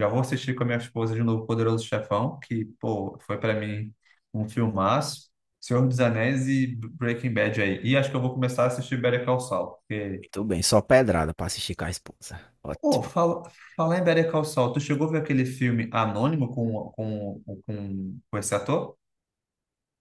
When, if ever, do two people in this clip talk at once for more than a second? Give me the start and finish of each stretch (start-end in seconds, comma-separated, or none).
none